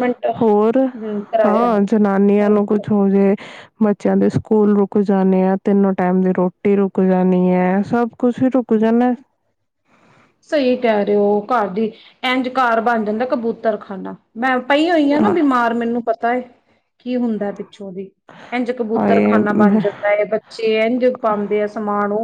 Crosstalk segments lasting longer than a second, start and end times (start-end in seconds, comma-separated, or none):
none